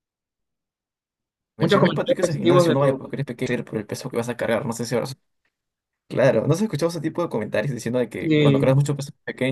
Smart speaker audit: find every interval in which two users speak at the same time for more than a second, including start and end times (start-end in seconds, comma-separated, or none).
1.6-3.0